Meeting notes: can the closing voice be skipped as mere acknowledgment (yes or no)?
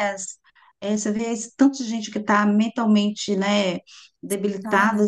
yes